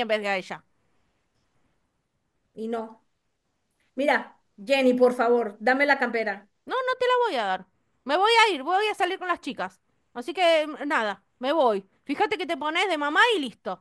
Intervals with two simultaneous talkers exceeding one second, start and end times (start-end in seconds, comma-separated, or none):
none